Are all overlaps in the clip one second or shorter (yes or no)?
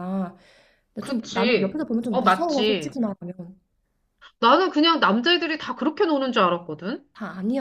no